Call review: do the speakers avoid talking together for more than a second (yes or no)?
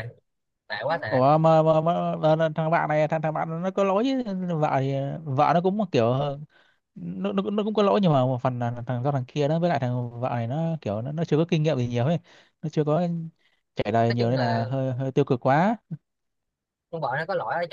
yes